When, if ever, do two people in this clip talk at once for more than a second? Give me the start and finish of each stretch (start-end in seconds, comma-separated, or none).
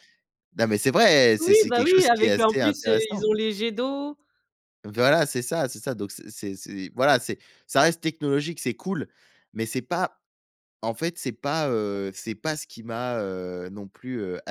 1.4-3.2